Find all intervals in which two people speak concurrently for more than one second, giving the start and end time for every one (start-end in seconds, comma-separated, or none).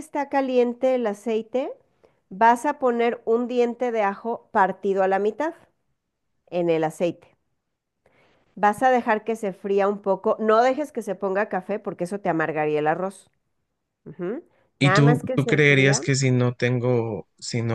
14.8-16.0